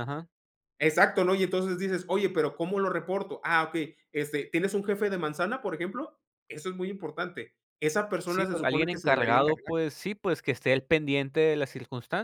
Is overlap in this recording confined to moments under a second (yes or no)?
no